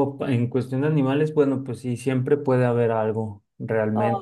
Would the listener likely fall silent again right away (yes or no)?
yes